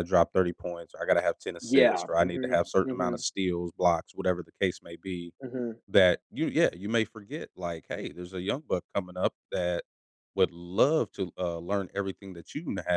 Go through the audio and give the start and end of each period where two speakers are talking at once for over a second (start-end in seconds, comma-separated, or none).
1.6-3.2